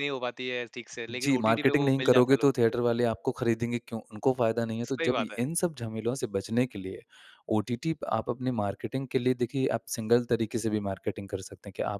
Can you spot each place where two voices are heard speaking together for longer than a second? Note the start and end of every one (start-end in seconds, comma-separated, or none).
1.1-2.5